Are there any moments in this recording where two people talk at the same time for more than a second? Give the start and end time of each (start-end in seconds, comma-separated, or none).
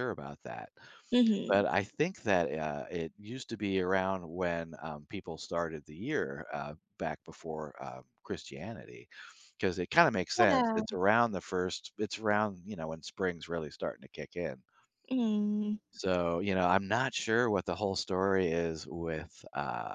none